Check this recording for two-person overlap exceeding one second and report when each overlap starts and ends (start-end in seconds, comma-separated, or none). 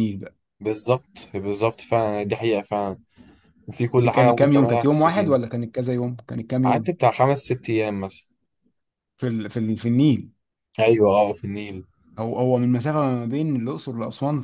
4.0-5.4